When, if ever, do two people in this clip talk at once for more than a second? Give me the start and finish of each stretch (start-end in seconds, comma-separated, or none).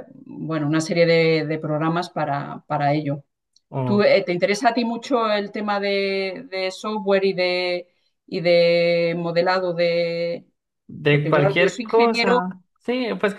11.1-12.4